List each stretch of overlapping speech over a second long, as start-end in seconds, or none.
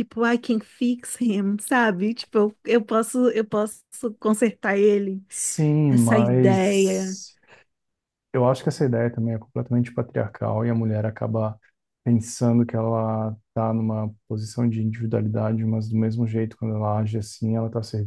5.9-7.2